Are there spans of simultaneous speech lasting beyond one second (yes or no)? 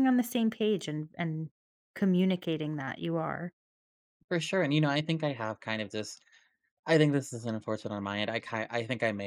no